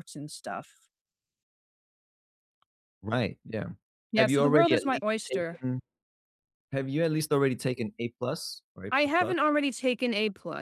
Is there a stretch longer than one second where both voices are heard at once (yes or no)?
yes